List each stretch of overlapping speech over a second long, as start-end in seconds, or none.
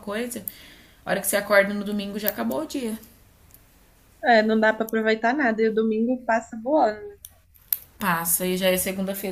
none